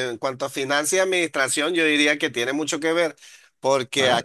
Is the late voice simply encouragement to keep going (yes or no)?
yes